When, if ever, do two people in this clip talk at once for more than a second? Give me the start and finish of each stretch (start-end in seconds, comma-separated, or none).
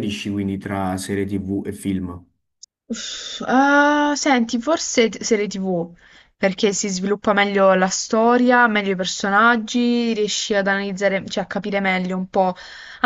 none